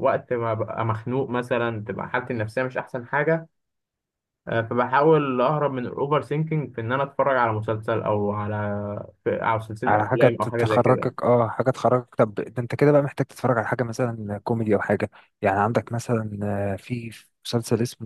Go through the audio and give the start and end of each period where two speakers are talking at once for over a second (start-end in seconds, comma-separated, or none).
9.9-11.1